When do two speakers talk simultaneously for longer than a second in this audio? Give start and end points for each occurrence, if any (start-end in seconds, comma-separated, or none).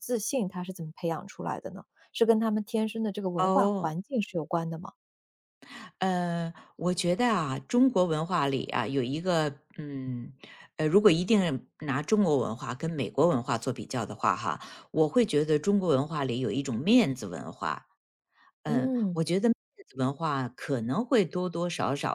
none